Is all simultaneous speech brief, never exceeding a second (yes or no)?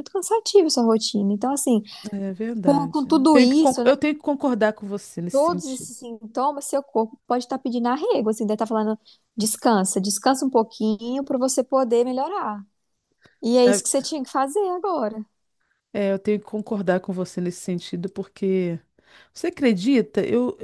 no